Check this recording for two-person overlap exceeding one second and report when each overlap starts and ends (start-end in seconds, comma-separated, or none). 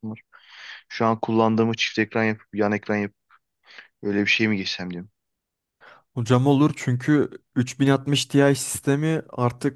none